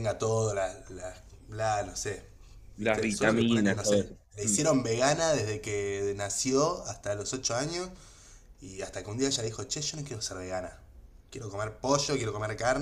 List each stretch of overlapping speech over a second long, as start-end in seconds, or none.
2.8-4.6